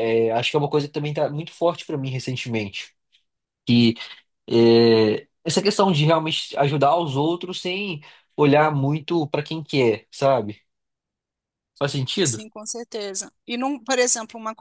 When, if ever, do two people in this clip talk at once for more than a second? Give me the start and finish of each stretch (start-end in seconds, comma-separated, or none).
none